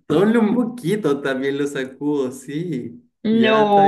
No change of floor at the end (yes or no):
no